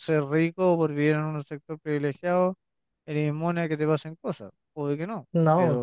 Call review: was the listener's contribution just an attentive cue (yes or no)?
yes